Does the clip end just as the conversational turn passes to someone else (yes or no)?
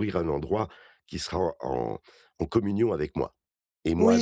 yes